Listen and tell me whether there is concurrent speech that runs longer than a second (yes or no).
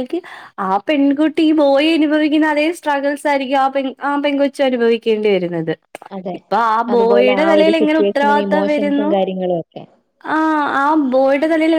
yes